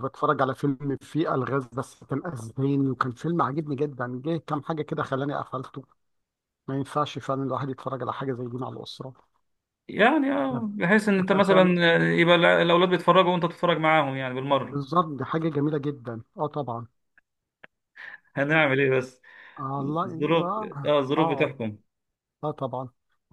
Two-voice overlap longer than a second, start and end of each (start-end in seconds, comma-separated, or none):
19.8-21.5